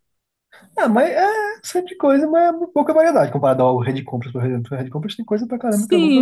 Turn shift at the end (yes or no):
yes